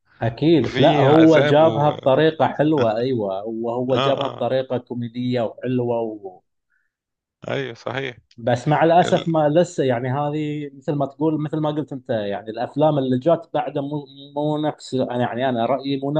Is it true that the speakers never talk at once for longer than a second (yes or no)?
no